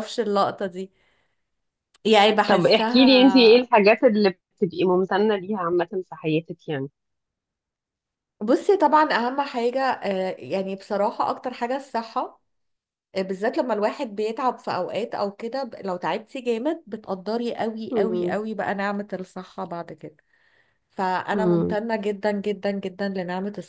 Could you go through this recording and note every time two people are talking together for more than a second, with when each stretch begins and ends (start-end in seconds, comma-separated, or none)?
2.5-3.7